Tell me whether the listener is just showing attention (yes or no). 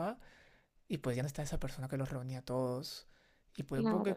yes